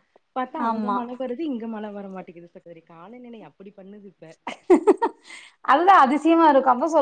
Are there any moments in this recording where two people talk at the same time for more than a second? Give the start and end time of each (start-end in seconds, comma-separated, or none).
none